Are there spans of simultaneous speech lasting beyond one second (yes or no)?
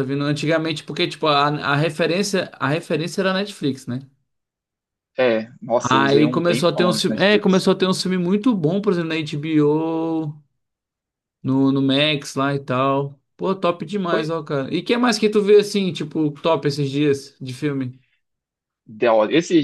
yes